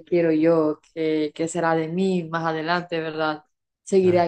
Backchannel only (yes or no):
yes